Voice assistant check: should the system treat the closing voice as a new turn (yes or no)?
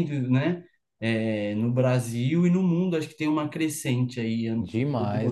yes